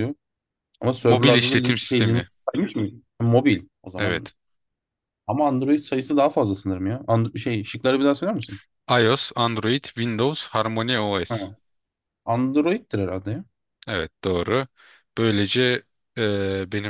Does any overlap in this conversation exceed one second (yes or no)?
yes